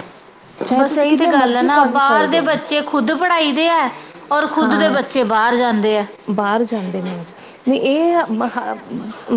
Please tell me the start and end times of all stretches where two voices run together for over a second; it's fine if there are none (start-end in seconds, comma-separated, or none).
0.8-2.5